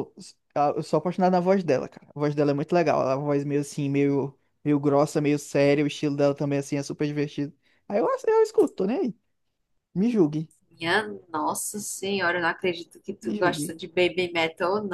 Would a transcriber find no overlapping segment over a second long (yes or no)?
yes